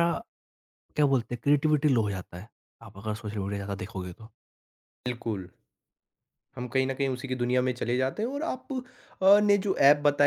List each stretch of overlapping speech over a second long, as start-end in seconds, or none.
none